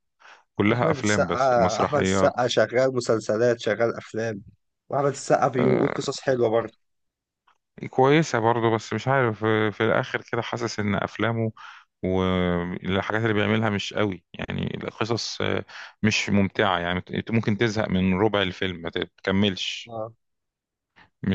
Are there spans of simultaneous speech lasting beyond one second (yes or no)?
yes